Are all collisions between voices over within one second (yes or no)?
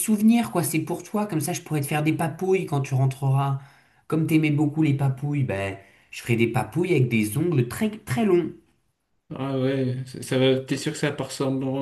yes